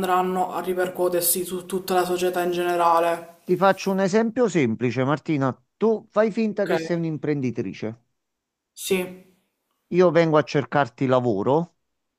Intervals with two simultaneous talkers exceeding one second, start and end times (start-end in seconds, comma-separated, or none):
none